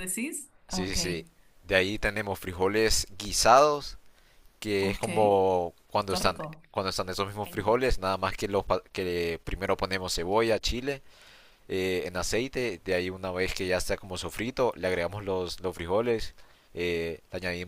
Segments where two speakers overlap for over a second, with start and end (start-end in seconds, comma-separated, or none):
none